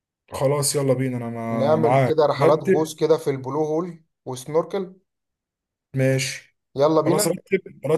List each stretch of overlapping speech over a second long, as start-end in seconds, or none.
1.5-2.9